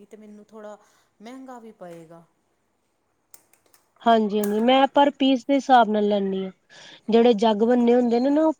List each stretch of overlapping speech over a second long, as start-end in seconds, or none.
none